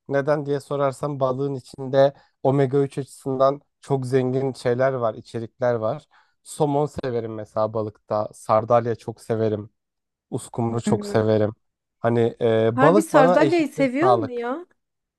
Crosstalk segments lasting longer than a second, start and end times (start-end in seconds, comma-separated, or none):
12.7-14.5